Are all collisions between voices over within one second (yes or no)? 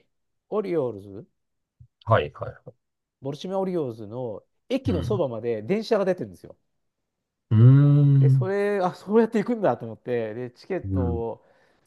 yes